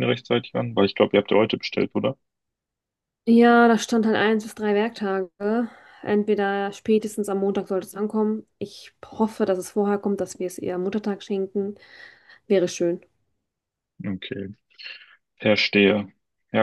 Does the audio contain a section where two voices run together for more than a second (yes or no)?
no